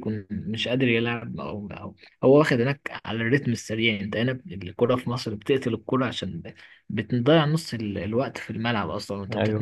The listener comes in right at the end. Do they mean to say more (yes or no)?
yes